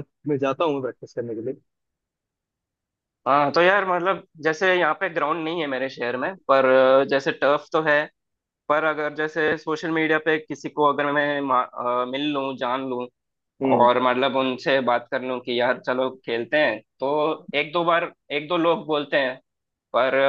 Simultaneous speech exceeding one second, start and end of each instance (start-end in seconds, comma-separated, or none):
none